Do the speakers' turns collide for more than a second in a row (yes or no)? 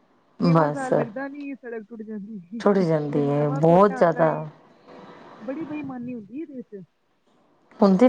yes